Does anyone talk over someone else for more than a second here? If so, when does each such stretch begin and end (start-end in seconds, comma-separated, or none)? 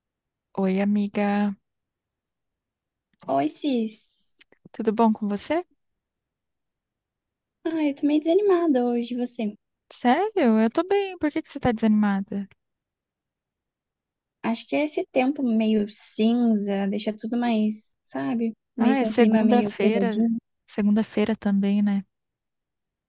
18.8-20.3